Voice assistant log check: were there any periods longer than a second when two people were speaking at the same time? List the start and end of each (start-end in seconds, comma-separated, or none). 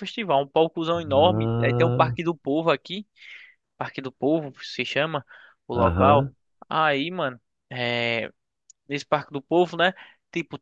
0.9-2.2